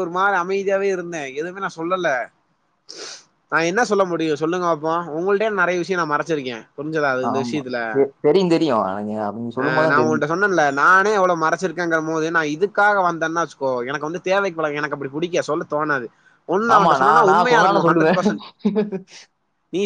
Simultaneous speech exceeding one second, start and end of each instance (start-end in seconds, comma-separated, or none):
16.7-18.2